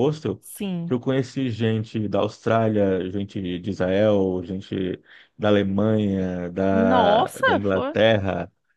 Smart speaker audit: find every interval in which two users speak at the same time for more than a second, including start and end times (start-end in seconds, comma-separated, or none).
6.7-8.0